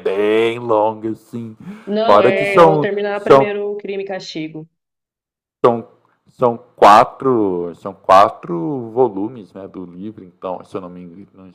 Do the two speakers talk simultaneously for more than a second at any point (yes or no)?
yes